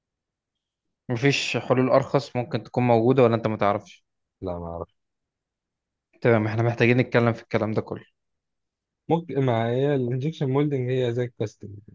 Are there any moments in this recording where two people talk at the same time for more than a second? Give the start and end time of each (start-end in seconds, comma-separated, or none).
none